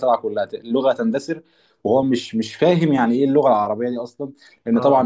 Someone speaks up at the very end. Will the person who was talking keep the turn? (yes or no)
yes